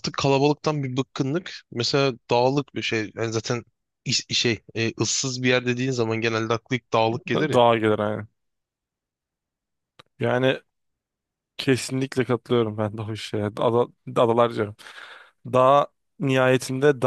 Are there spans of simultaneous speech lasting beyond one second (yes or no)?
no